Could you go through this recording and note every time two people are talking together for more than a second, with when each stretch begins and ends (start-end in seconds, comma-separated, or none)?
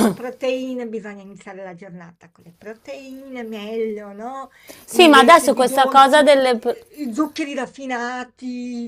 4.9-6.2